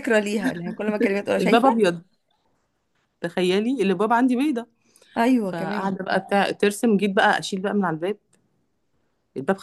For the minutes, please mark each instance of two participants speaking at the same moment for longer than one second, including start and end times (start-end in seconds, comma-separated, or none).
none